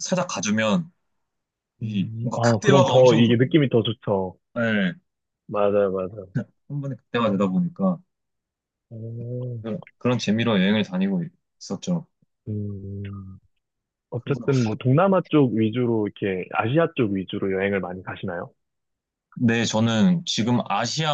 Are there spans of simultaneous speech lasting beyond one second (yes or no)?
yes